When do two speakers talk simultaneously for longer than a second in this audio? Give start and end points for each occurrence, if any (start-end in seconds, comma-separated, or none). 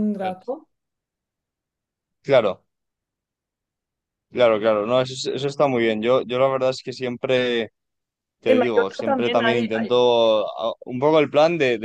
8.4-9.9